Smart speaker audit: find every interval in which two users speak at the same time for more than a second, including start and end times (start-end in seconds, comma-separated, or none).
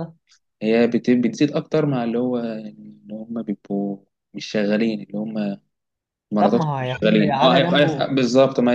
6.4-8.1